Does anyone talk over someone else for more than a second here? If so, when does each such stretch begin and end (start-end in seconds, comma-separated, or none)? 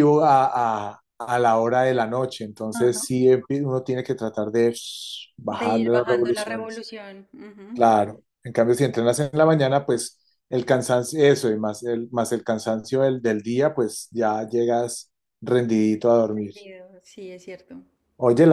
5.5-6.8